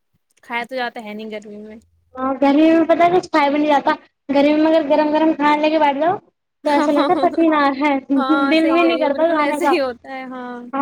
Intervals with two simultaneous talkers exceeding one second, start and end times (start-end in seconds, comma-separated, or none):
8.2-9.7